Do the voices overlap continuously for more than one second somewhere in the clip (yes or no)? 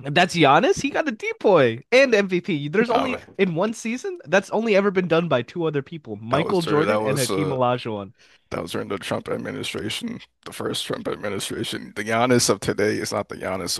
yes